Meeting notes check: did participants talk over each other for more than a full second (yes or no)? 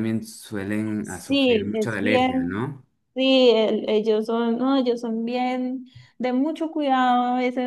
yes